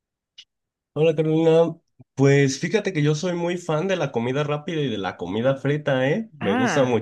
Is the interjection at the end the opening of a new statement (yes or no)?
no